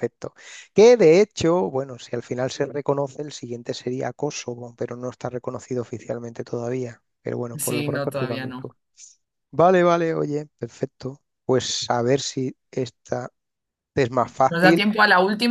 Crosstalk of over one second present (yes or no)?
yes